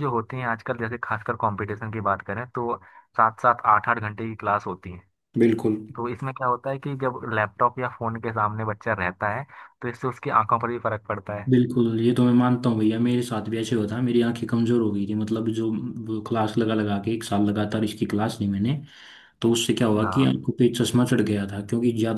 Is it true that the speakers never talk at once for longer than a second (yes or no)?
yes